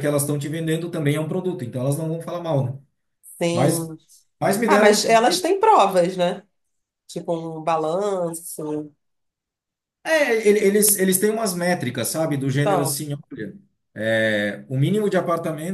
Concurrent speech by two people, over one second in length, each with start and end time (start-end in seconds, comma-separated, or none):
none